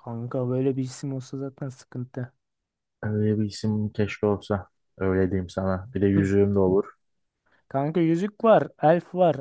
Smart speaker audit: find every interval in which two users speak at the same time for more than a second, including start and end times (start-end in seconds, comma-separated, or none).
none